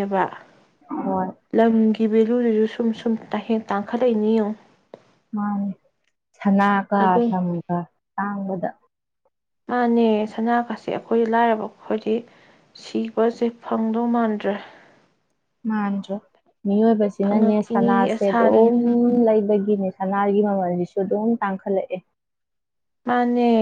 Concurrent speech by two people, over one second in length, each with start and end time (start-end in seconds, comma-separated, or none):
17.2-18.6